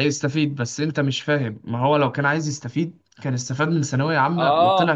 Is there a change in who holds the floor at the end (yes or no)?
yes